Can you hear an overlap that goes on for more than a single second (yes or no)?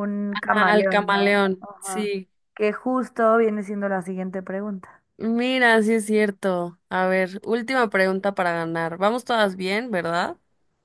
yes